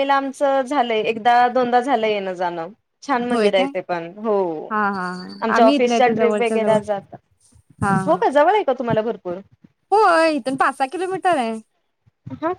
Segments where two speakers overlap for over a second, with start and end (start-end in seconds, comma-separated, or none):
5.4-6.8